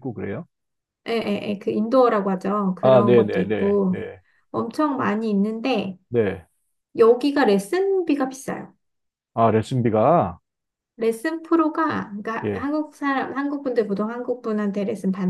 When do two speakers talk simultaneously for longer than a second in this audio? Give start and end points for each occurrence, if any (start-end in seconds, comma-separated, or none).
2.8-4.0